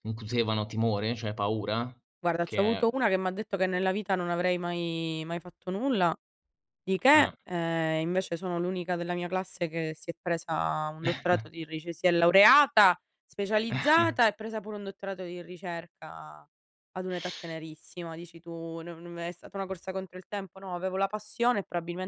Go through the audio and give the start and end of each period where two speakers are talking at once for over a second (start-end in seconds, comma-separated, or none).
none